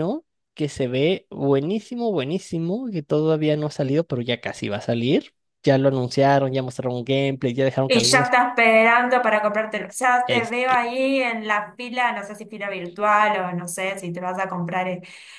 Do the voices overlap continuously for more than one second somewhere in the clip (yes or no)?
no